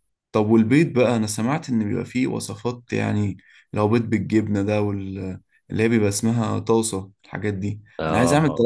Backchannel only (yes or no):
yes